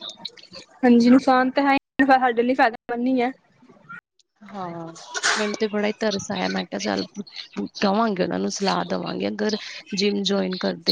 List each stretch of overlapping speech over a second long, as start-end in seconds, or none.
none